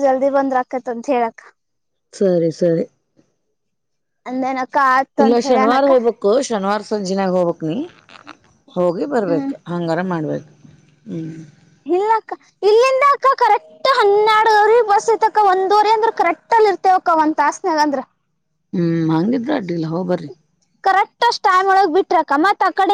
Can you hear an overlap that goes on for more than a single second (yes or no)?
no